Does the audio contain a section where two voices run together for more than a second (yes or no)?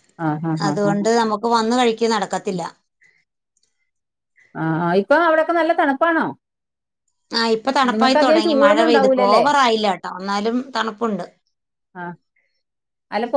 yes